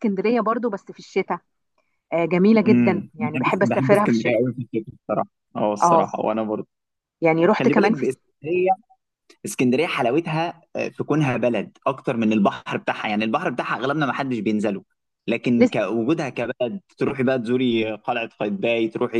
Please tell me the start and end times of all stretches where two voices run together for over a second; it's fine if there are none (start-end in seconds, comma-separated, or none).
2.7-4.4